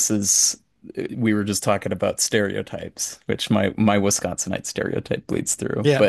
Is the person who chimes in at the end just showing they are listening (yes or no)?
yes